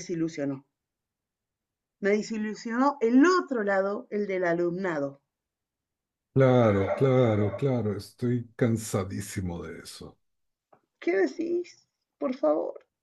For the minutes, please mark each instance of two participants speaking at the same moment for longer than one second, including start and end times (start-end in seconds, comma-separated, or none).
none